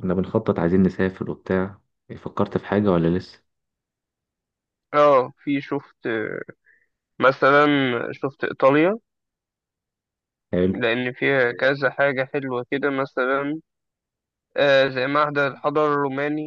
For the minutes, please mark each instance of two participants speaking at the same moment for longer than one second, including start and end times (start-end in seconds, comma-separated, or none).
none